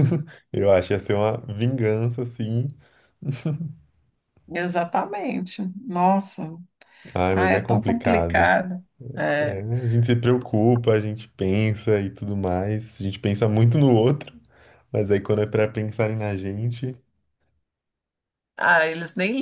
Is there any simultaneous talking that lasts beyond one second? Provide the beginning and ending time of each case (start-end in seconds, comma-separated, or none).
7.3-8.6